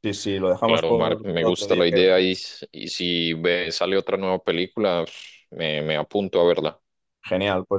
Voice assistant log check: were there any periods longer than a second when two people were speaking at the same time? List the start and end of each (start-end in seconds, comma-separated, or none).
0.6-2.2